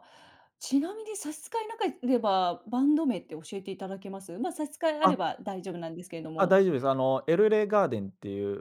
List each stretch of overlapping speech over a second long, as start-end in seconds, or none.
none